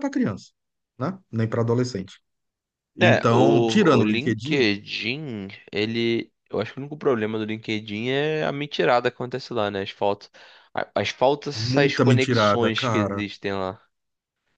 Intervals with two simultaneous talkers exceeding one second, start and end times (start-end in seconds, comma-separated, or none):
3.0-4.7, 11.6-13.2